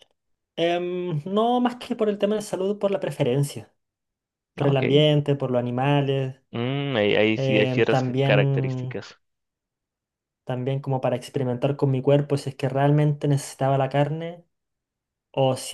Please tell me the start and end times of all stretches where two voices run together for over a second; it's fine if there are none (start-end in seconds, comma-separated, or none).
7.3-9.0